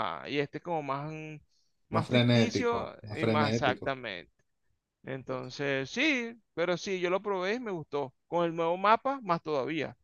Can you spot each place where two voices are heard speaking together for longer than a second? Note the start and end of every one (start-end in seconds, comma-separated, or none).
1.9-3.9